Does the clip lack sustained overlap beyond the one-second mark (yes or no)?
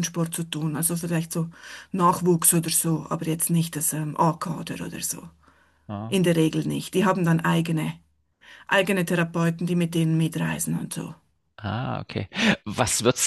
yes